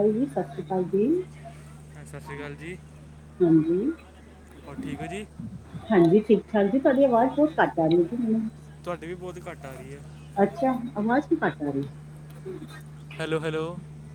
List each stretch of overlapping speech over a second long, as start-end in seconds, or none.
none